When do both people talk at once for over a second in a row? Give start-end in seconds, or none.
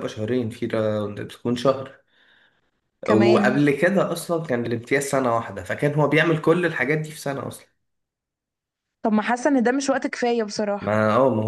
none